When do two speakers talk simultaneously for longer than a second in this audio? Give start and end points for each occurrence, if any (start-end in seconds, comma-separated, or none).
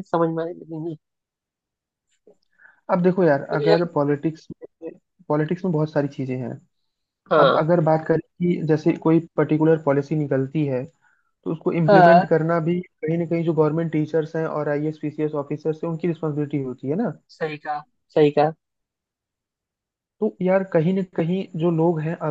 none